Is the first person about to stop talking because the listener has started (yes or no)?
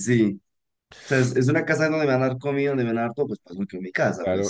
yes